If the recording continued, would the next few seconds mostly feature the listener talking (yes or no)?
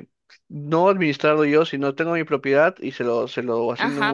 yes